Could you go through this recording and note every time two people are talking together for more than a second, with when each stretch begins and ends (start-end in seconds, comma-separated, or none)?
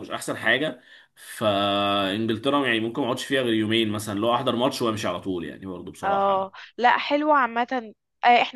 none